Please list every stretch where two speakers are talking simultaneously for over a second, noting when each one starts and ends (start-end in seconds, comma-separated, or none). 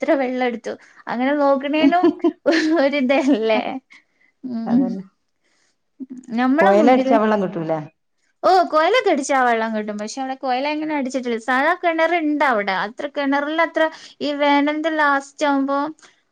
none